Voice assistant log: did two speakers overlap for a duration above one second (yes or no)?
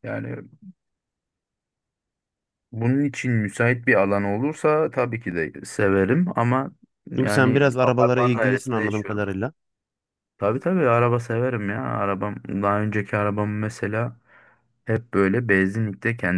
yes